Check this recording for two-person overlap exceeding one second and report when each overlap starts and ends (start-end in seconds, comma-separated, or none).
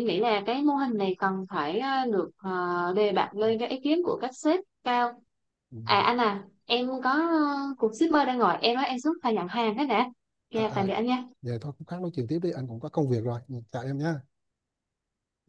none